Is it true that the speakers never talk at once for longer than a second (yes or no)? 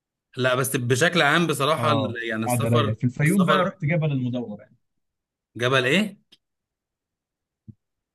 no